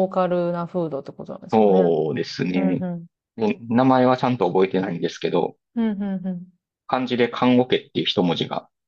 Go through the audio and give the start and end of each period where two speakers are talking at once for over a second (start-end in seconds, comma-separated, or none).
none